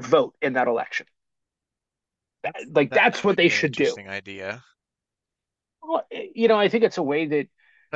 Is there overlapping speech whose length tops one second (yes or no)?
yes